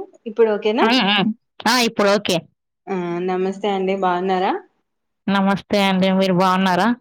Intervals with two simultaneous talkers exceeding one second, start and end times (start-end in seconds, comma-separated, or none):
none